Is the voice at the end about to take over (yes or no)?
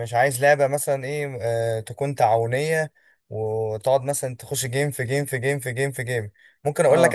no